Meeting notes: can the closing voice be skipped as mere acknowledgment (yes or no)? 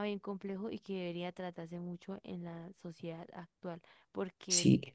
yes